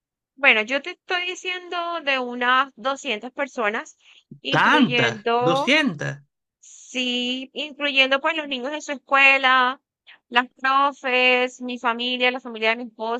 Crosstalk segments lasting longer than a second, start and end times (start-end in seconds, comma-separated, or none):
4.5-5.8